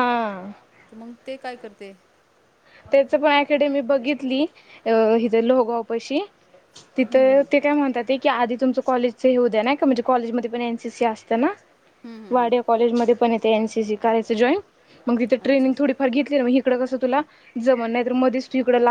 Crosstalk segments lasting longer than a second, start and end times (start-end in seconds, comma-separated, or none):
none